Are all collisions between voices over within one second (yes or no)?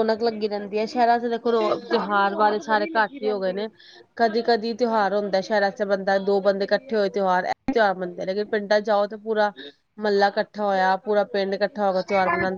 no